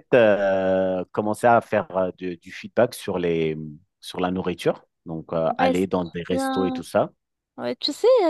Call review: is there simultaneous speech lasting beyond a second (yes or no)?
yes